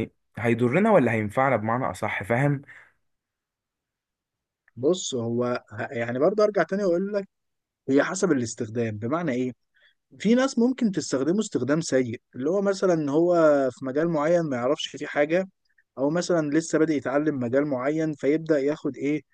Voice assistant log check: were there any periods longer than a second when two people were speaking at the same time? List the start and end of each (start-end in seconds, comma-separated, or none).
none